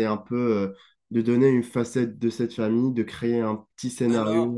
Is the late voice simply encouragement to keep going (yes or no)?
no